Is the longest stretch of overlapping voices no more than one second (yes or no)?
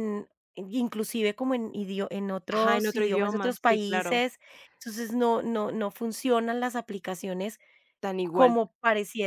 no